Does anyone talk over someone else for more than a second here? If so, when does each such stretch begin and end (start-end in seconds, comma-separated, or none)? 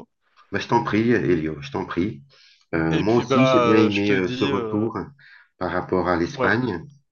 2.9-4.9